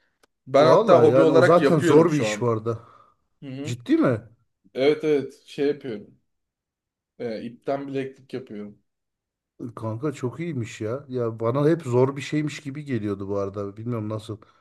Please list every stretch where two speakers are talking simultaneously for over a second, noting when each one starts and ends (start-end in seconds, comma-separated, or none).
0.6-2.5